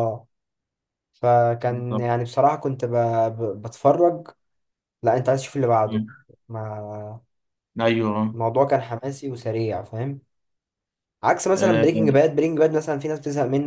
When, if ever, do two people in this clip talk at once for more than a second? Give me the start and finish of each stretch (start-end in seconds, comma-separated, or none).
none